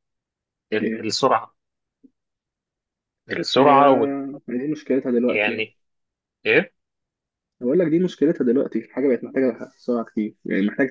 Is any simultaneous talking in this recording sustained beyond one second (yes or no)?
no